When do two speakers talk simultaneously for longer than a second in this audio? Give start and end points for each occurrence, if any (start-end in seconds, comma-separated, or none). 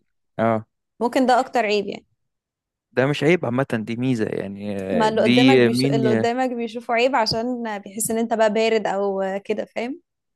4.9-6.3